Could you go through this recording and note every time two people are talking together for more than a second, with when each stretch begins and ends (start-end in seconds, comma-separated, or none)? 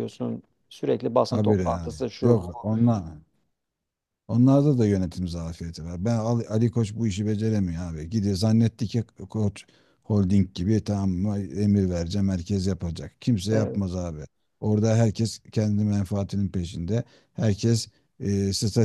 1.3-2.5